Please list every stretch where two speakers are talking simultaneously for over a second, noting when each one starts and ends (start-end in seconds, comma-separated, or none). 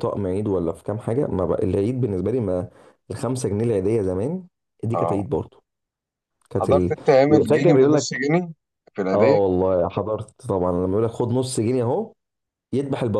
6.6-8.2